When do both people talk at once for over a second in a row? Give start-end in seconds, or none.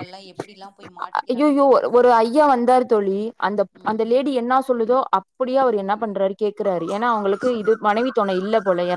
none